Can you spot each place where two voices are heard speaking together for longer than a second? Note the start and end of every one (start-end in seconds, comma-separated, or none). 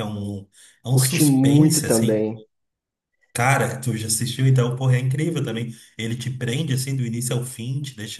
0.9-2.3